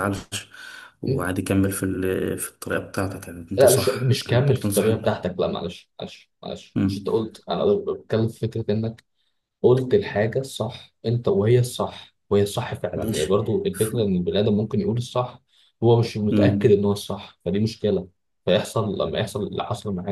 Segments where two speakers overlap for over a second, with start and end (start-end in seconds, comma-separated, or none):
3.6-4.9